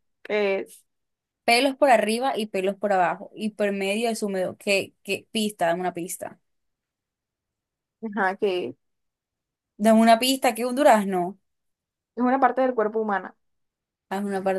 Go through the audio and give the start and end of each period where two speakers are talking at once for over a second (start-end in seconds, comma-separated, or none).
none